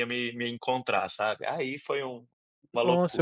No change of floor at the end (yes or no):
no